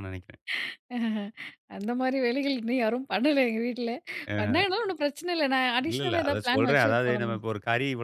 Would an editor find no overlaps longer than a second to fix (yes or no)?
no